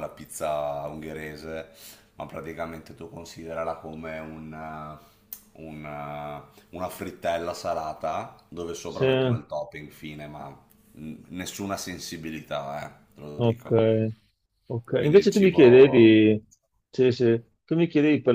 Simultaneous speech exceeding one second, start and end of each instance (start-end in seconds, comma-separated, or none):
14.9-16.2